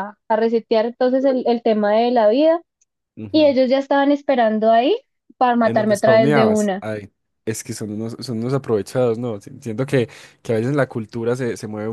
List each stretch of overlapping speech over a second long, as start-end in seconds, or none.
5.6-6.8